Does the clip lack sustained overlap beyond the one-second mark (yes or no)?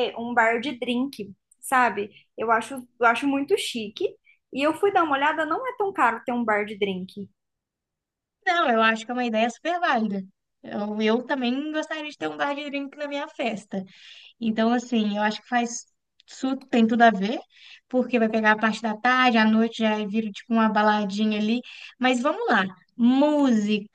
yes